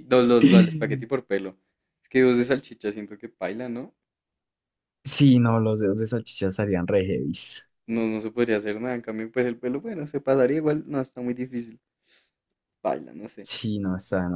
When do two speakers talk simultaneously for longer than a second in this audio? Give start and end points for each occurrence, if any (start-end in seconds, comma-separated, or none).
none